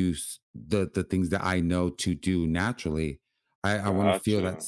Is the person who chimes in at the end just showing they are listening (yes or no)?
yes